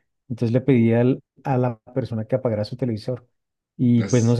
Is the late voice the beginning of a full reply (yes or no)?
no